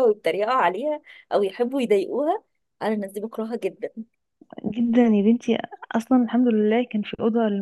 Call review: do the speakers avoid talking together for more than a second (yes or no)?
yes